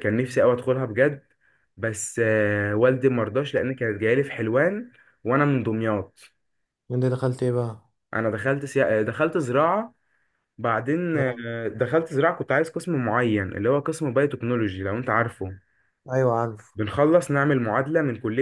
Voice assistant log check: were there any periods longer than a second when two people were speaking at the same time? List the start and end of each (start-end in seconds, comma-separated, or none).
none